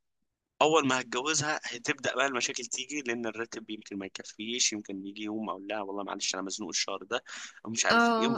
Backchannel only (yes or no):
no